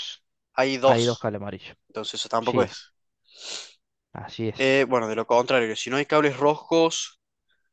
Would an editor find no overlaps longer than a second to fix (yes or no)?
yes